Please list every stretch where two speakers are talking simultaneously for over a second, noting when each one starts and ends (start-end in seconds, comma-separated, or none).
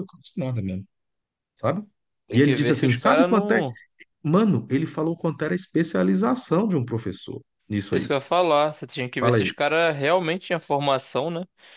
2.3-3.6